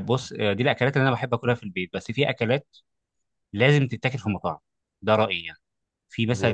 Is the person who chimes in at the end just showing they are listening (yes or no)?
yes